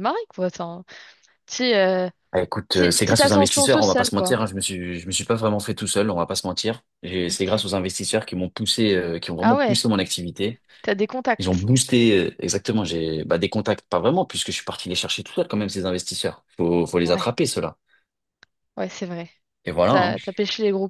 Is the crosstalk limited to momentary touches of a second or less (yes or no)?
no